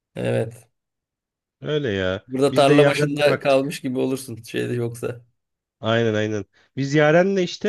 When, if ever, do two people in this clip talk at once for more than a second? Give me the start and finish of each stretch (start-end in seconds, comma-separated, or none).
2.3-3.8